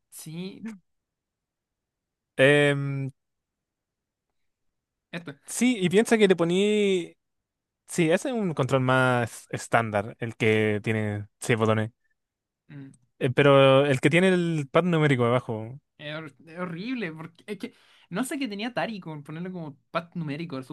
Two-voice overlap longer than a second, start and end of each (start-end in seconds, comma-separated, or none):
none